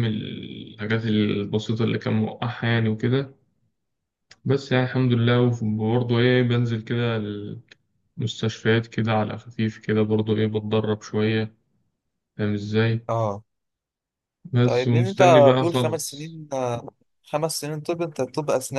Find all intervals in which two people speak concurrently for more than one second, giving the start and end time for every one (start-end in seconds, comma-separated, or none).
14.6-16.4